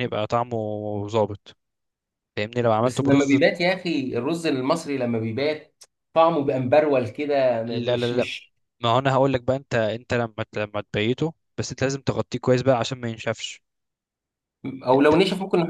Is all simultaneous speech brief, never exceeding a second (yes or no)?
yes